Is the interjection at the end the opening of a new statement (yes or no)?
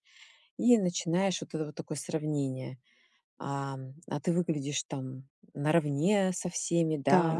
no